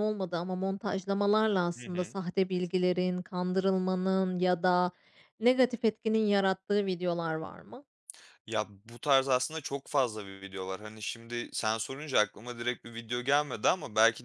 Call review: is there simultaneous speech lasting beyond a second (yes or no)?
no